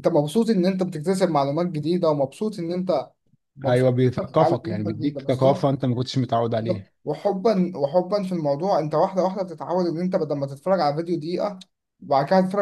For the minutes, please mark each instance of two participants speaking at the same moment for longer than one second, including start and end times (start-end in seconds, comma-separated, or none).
3.7-5.7